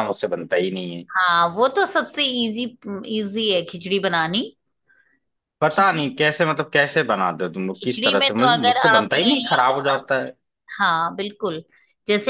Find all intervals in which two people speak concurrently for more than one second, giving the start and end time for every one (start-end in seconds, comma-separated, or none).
7.8-9.3